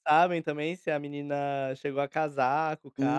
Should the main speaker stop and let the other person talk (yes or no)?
yes